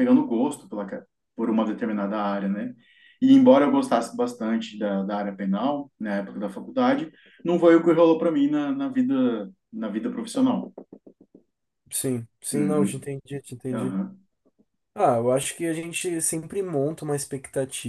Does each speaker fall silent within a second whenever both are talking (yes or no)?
yes